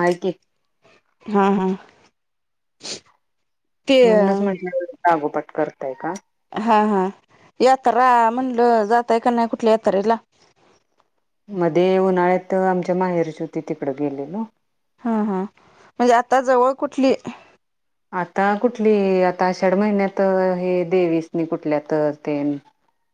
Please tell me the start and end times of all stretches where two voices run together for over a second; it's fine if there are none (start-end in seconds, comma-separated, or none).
none